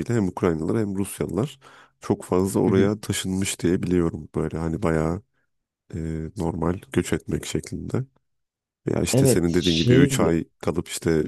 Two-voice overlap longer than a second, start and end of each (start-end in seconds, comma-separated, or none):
9.1-10.4